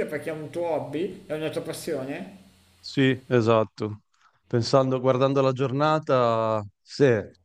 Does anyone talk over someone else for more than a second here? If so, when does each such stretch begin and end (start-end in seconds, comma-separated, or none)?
none